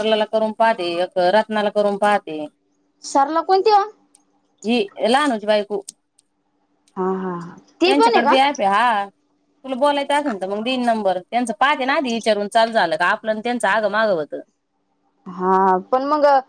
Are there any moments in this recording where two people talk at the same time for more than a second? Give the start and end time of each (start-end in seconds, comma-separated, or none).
none